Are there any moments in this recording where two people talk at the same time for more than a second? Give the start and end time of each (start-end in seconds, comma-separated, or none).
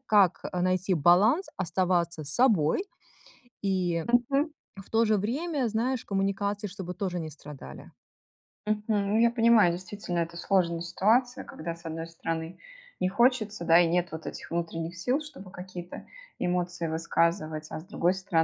none